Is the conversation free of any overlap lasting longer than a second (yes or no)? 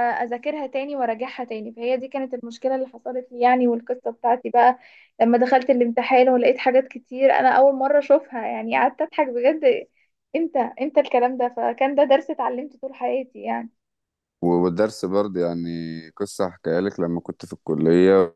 yes